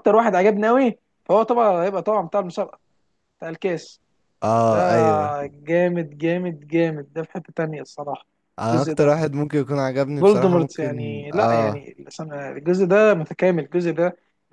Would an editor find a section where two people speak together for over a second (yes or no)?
yes